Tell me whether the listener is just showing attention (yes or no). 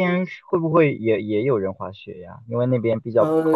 no